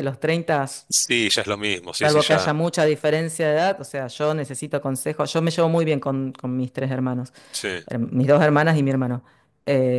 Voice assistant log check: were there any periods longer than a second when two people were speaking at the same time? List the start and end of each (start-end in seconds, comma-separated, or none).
none